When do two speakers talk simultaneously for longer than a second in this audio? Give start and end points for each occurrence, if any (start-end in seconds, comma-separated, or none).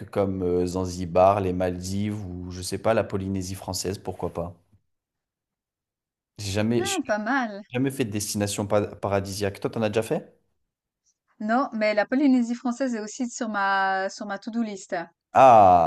none